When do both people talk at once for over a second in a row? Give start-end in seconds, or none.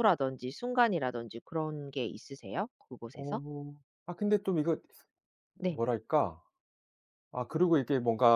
none